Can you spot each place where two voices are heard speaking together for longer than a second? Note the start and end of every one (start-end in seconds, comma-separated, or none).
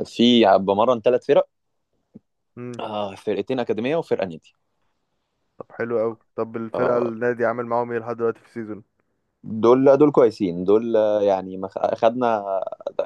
none